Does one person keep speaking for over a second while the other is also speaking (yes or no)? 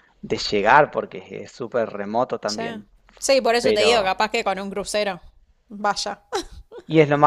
no